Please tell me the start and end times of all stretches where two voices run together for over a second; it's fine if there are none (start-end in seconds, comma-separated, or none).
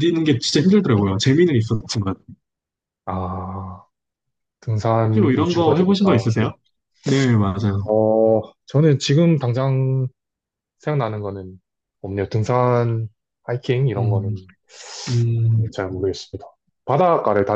5.1-6.5